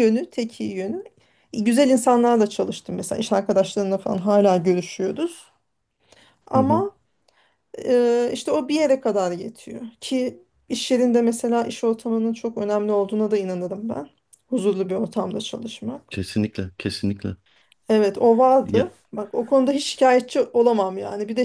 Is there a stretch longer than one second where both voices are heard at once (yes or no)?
no